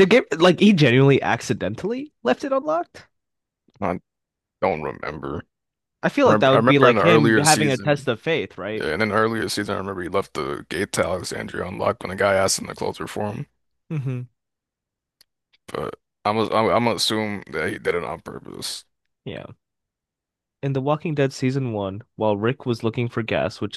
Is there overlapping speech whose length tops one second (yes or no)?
yes